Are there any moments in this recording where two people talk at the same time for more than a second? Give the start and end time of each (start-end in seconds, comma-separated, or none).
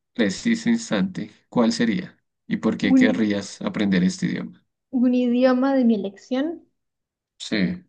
none